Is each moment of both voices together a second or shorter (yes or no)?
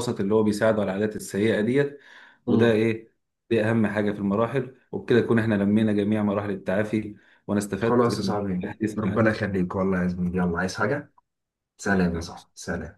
no